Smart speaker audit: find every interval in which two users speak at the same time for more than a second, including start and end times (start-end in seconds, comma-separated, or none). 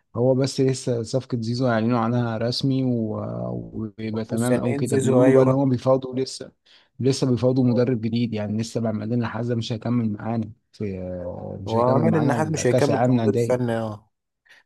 4.3-5.5, 11.7-13.8